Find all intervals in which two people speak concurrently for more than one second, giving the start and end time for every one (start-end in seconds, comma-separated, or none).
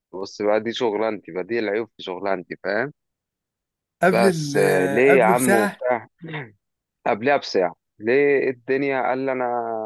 4.1-5.8